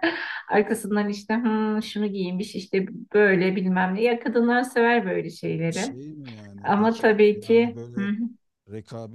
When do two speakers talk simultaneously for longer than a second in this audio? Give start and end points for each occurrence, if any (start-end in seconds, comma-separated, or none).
6.6-8.1